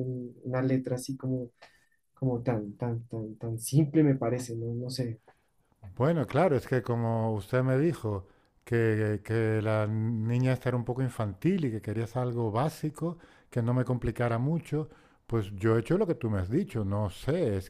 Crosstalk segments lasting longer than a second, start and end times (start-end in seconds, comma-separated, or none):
none